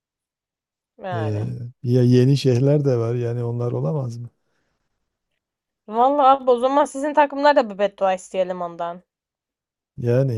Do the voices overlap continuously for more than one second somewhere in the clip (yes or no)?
no